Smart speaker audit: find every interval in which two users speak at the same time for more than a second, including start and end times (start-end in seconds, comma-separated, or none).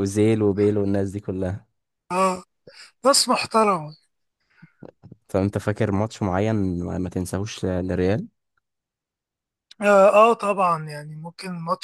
none